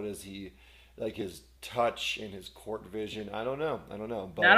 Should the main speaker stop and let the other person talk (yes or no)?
yes